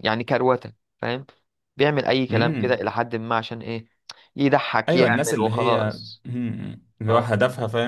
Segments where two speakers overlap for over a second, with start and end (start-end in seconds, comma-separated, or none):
4.9-6.2